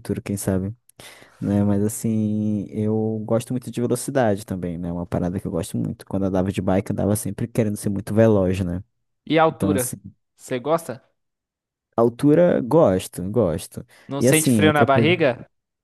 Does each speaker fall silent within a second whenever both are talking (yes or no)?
no